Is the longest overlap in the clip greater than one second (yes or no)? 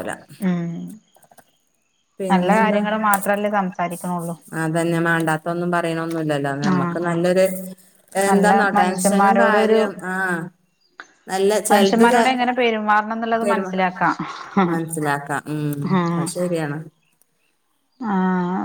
yes